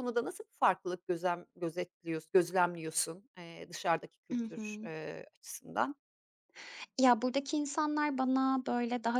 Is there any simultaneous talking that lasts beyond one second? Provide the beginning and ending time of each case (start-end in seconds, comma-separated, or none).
none